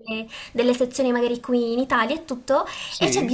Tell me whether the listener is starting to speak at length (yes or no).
no